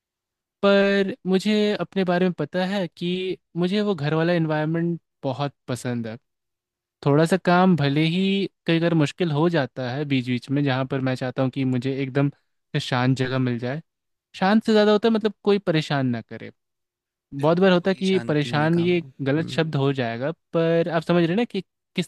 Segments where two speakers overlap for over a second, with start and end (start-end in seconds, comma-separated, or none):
17.4-19.7